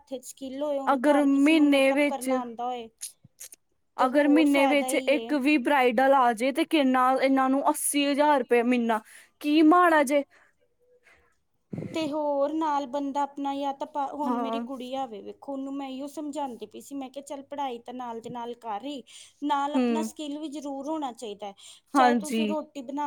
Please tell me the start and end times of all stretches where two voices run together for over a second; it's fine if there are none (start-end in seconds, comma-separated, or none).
0.9-2.3, 4.0-5.3